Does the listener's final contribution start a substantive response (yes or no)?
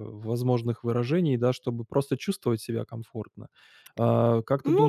yes